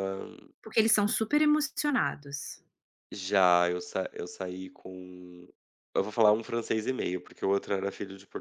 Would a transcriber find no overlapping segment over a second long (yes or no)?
yes